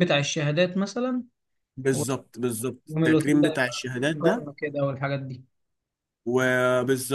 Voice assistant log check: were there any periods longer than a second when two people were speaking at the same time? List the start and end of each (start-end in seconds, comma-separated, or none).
3.0-4.5